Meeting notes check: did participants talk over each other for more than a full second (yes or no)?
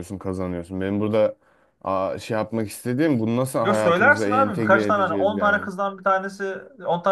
yes